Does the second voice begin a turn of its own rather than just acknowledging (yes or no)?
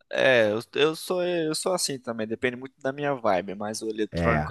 no